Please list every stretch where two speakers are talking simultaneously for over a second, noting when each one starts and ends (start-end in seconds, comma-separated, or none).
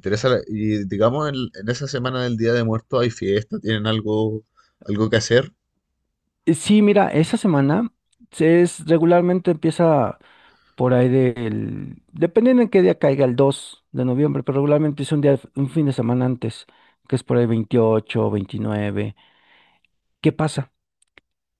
none